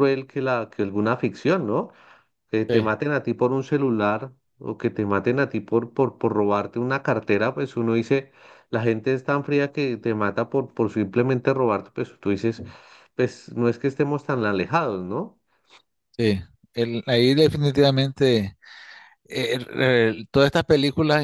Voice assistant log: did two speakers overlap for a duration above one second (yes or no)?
no